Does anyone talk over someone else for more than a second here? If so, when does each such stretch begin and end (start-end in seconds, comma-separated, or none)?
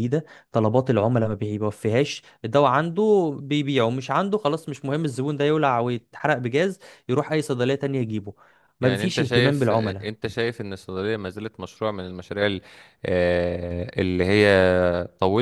8.8-10.1